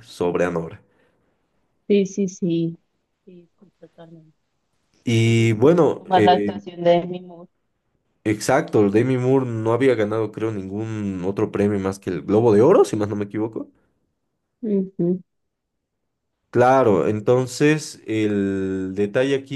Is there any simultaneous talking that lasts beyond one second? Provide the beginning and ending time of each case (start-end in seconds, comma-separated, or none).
5.2-6.5